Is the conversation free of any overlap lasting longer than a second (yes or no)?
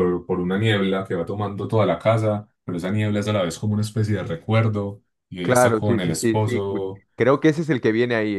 no